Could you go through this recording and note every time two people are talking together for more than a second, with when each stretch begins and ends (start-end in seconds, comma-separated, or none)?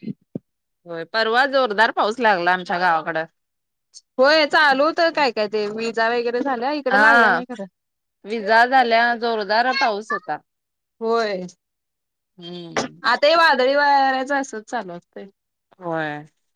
none